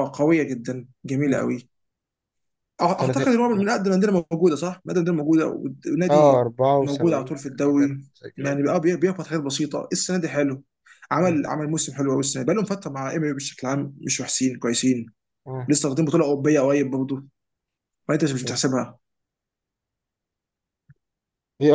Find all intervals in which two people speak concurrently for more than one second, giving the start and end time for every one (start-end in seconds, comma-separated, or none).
6.1-8.6